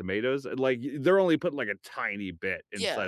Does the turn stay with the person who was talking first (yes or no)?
yes